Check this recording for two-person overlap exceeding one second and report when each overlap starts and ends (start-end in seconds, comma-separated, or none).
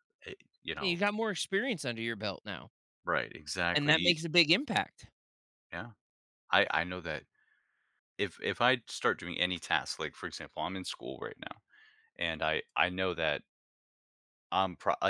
none